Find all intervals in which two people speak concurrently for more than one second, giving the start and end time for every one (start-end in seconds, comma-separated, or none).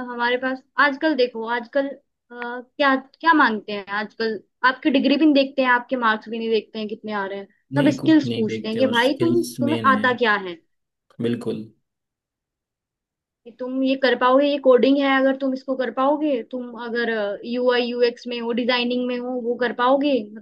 7.7-10.1